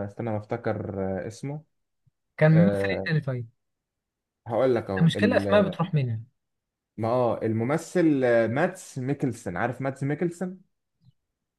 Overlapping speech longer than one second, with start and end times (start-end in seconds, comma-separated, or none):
none